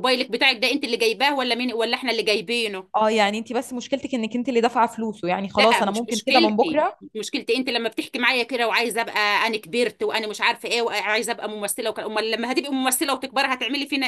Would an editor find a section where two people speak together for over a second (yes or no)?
yes